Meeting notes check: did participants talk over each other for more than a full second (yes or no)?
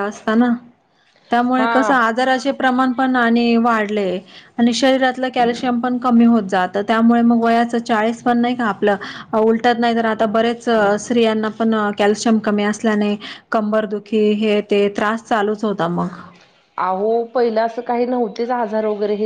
no